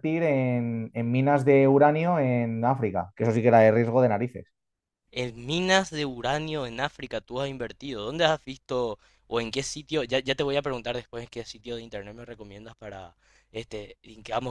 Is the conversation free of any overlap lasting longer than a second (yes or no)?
yes